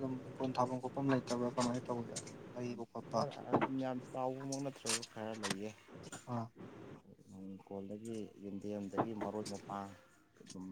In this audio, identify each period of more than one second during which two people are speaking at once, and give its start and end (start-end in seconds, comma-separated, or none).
none